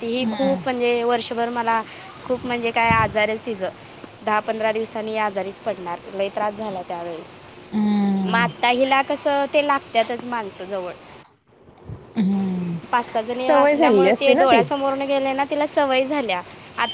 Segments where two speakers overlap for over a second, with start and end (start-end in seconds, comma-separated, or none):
13.3-14.6